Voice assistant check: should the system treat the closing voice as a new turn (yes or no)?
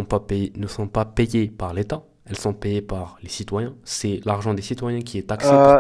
yes